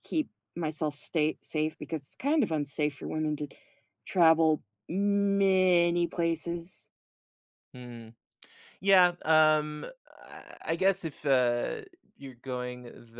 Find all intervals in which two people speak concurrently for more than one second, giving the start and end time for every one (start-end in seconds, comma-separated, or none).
none